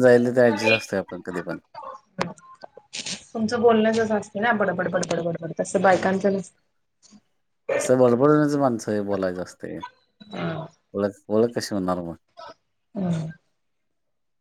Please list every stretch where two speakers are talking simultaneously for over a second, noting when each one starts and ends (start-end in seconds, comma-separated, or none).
none